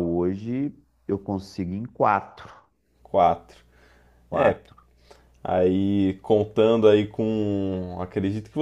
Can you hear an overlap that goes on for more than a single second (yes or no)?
no